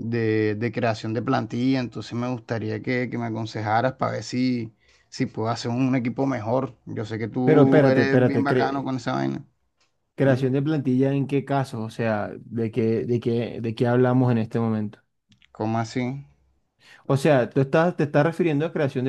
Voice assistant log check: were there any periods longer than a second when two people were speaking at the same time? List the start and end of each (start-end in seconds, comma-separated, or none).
7.4-8.9